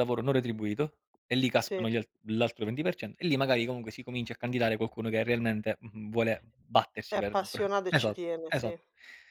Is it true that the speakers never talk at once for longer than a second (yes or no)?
no